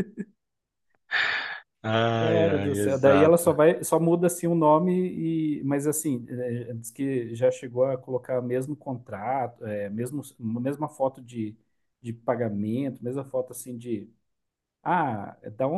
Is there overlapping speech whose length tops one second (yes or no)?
yes